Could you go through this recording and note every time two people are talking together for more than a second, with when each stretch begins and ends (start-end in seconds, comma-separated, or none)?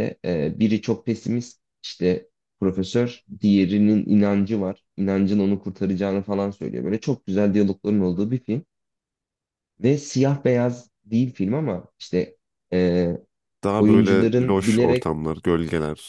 13.8-15.1